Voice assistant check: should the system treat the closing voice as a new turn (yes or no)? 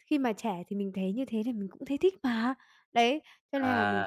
no